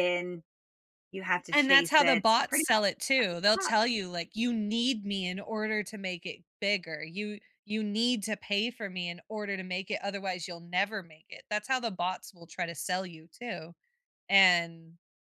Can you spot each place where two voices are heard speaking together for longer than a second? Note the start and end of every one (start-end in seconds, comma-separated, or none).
1.5-2.9